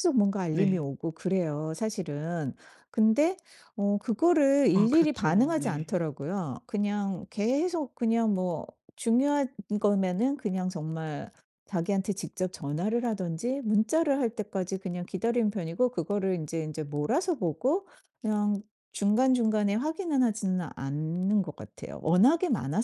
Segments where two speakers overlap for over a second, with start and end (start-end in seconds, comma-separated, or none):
4.7-6.0